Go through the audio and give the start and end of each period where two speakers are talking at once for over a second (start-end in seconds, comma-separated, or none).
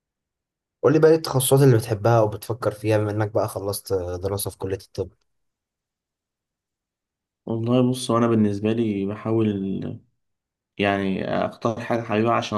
none